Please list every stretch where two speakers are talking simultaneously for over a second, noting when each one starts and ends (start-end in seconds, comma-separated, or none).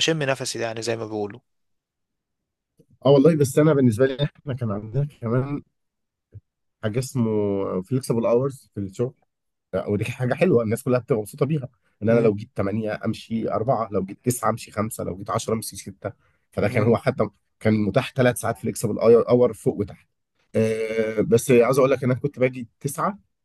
none